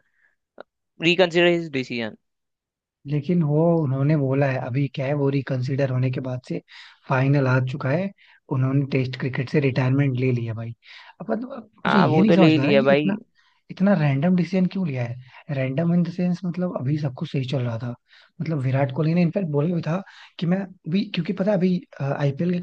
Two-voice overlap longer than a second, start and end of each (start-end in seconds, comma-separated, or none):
11.8-13.2